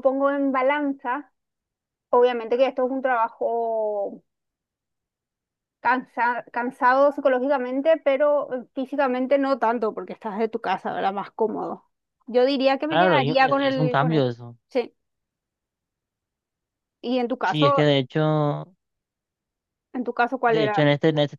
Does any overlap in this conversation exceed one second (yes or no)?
yes